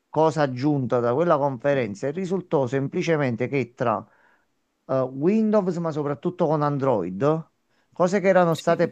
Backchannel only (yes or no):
yes